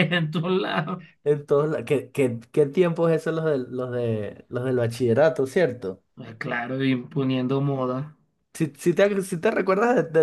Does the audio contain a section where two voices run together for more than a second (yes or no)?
no